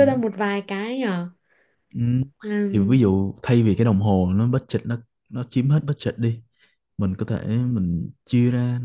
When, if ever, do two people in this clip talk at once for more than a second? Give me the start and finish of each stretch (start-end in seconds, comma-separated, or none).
none